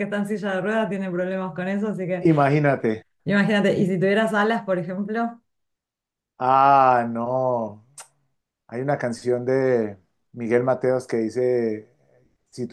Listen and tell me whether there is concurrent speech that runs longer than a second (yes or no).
no